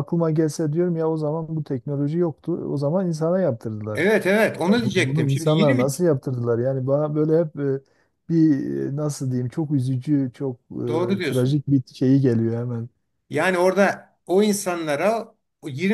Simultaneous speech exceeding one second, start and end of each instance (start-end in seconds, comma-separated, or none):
4.7-5.9